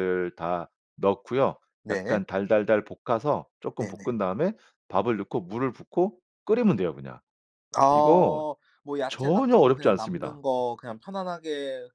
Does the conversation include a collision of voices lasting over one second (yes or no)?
yes